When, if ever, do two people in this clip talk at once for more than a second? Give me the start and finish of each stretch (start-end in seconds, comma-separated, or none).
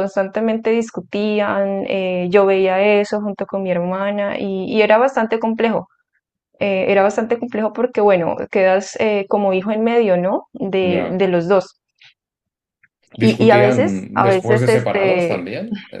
13.2-15.4